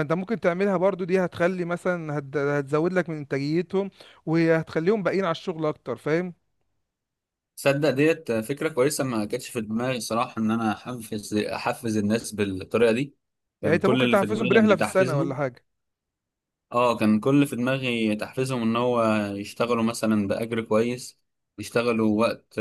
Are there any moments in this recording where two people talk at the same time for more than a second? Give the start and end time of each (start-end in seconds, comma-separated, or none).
13.6-15.4